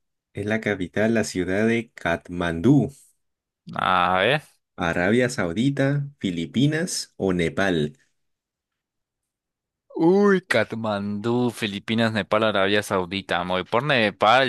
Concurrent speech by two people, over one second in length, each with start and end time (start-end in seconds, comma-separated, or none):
none